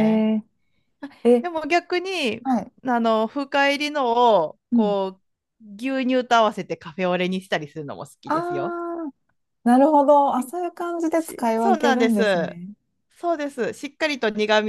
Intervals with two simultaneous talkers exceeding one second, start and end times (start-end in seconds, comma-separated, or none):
11.2-12.6